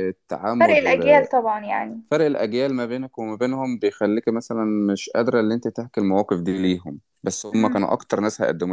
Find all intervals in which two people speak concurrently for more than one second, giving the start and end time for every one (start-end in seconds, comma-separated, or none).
none